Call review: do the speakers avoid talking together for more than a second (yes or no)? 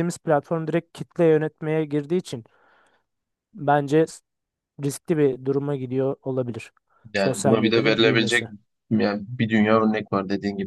no